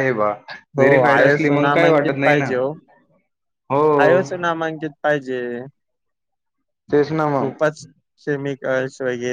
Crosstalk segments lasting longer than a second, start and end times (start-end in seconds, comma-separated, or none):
0.8-2.5